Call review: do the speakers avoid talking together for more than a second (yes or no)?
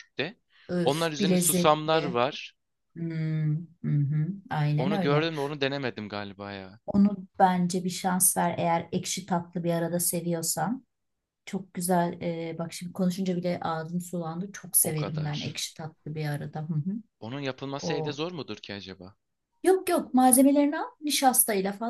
no